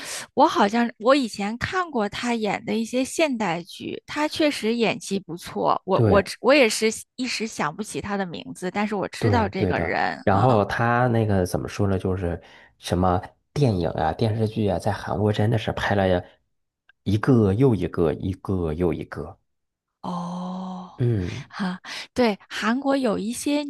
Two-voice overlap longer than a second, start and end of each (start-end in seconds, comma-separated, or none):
9.2-10.6